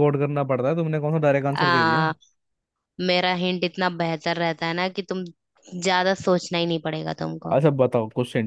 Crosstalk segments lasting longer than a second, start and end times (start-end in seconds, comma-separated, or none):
none